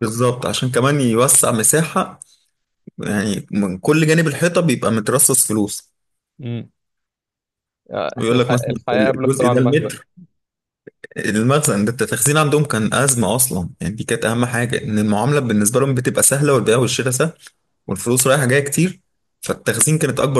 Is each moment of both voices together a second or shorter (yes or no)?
no